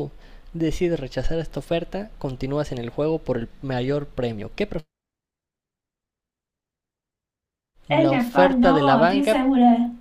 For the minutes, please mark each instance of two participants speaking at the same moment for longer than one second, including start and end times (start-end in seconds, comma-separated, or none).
7.9-9.4